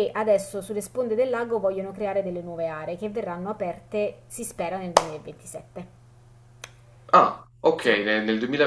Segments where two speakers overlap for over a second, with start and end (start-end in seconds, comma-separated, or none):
none